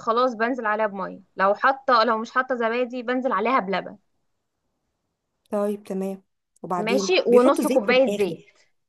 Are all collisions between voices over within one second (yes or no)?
no